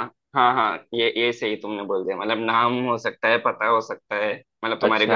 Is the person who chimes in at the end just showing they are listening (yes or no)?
no